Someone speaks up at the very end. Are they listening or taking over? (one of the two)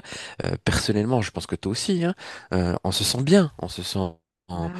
listening